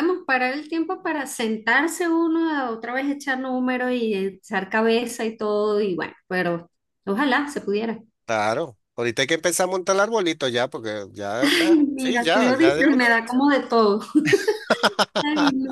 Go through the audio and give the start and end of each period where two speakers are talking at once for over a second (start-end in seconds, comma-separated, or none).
11.4-13.4